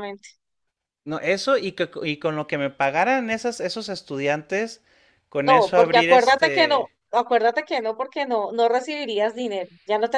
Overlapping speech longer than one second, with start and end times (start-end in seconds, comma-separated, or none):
5.5-6.9